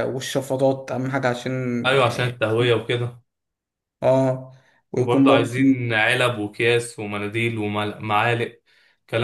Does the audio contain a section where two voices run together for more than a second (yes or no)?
no